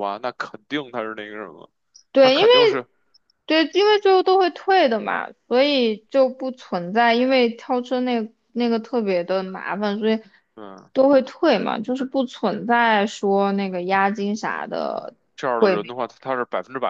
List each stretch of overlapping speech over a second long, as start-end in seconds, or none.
none